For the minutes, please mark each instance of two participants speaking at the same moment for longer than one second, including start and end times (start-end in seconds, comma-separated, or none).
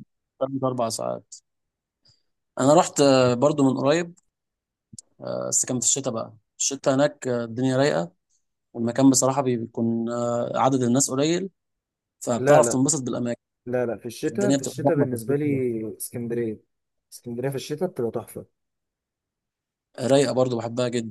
14.3-15.6